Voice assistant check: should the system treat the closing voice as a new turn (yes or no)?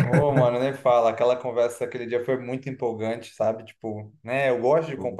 no